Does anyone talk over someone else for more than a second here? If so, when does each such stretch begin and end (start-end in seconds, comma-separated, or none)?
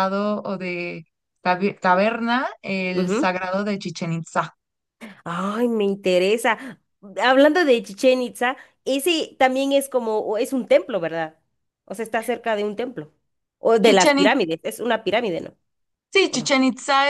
none